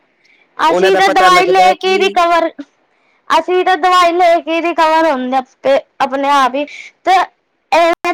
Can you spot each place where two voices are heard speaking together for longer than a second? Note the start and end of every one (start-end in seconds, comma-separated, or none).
0.7-2.1